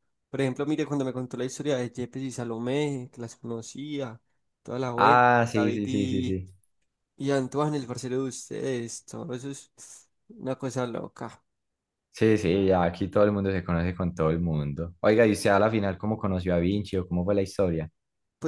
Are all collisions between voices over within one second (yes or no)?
no